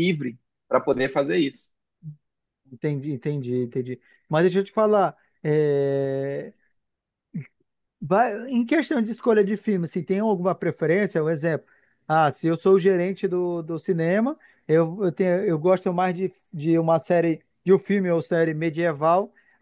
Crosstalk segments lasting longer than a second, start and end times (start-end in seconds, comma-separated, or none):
none